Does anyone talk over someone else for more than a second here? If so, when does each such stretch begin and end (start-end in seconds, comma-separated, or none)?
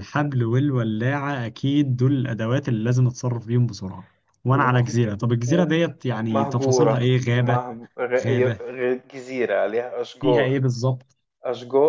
6.3-7.6